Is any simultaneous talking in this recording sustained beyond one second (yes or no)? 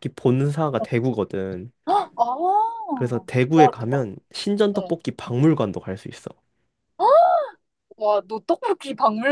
no